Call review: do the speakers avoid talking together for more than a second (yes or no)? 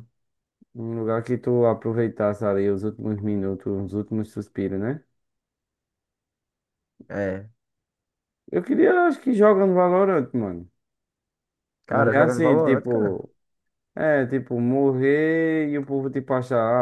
no